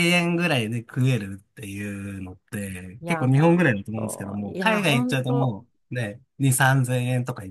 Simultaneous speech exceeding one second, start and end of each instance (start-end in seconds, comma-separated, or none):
3.0-5.5